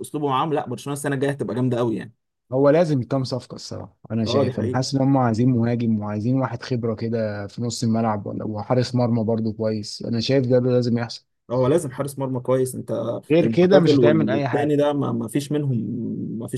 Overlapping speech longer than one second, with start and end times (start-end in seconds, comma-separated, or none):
13.4-14.8